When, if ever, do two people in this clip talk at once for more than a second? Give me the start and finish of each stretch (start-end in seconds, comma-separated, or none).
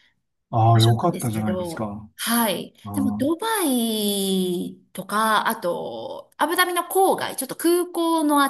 0.7-2.1